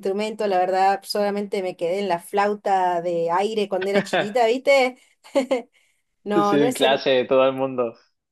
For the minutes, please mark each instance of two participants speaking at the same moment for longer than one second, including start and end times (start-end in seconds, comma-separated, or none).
none